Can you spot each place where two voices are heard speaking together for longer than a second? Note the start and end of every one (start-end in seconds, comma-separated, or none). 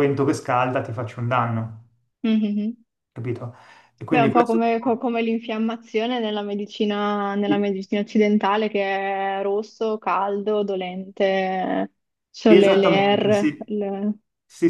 12.4-13.7